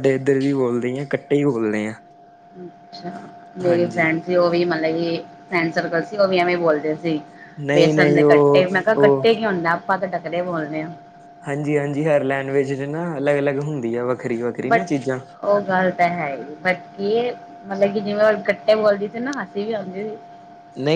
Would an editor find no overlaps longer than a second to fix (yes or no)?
no